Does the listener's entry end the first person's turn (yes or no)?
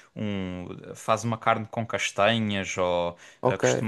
no